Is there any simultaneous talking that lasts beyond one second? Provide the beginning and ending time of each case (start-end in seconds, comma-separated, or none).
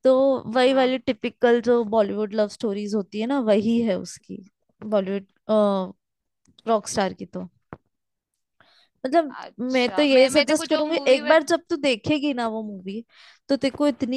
9.4-11.5